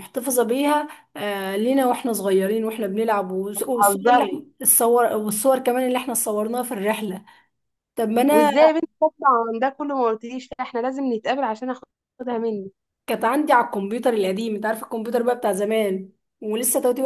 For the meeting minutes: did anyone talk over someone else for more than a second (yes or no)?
no